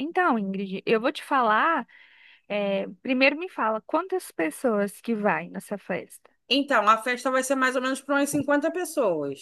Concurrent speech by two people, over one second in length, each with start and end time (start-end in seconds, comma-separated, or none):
none